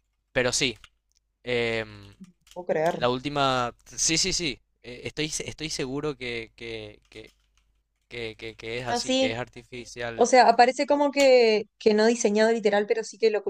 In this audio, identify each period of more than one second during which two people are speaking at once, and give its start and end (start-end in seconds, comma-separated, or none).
none